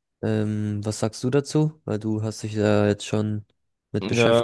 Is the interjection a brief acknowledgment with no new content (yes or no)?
no